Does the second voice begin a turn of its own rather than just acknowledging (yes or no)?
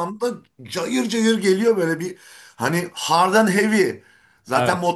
no